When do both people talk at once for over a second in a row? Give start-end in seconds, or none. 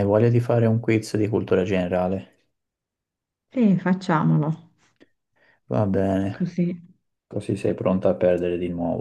none